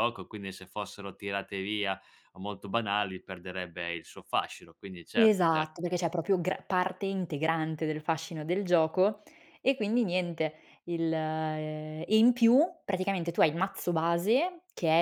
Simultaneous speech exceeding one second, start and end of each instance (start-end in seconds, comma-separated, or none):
none